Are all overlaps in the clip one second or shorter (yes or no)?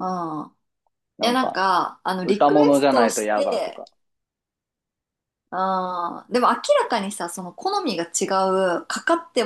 no